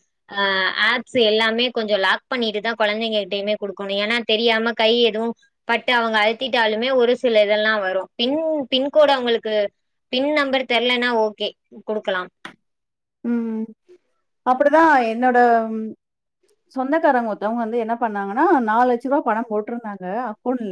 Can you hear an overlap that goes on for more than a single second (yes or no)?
no